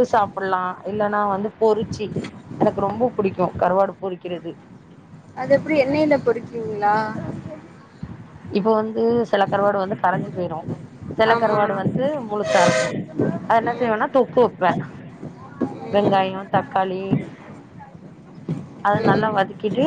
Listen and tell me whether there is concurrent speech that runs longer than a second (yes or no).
no